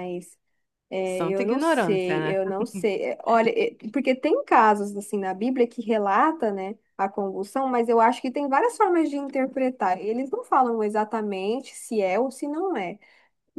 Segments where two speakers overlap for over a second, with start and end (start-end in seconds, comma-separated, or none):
1.0-2.5